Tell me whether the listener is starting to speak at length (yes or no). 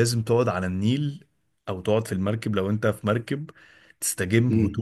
yes